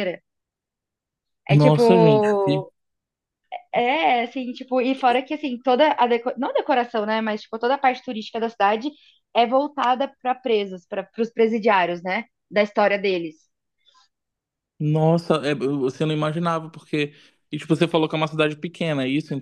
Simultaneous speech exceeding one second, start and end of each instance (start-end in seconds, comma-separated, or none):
1.5-2.7